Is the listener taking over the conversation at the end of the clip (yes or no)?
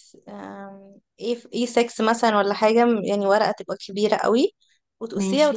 no